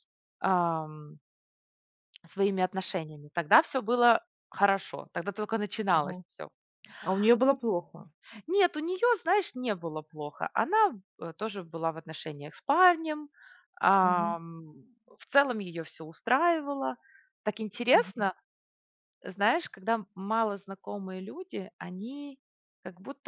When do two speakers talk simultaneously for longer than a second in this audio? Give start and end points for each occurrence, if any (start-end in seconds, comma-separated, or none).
none